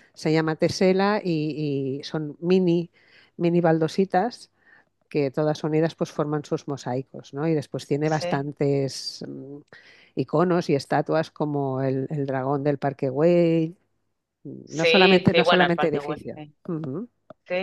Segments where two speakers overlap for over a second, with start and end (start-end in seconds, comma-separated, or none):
14.6-16.5